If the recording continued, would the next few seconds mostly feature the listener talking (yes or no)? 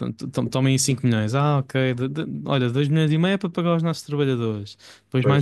no